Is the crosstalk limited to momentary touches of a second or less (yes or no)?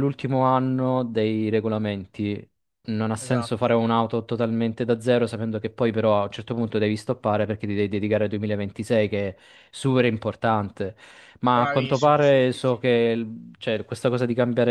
no